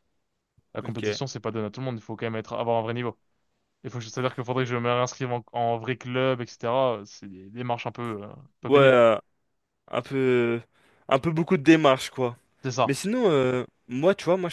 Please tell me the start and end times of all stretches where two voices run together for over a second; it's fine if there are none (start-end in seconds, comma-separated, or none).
none